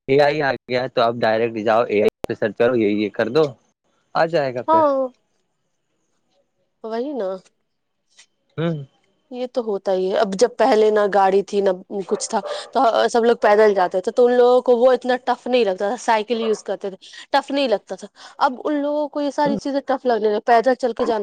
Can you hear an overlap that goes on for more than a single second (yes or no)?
no